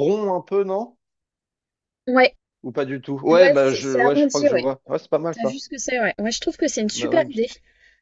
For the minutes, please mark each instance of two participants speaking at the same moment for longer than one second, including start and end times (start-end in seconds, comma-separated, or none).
3.3-4.7